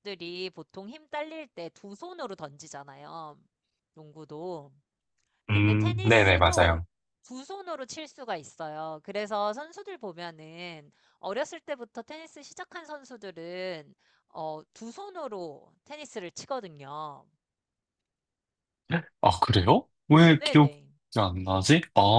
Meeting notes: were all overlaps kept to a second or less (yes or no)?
no